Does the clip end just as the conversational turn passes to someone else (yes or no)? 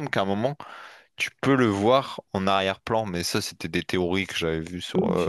yes